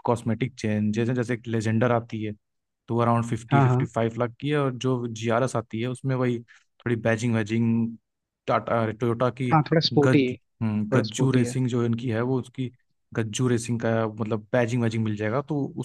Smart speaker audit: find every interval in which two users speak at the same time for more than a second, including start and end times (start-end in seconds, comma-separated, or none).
9.9-11.6